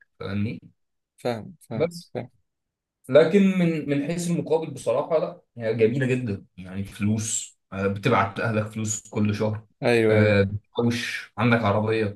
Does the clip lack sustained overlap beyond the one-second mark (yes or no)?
yes